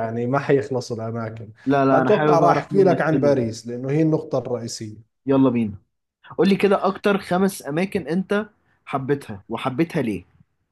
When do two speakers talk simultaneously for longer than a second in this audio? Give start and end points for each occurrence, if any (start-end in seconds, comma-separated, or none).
1.9-3.5